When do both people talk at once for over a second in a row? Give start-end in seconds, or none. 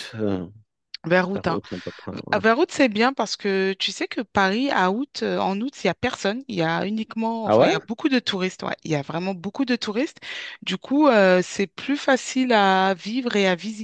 none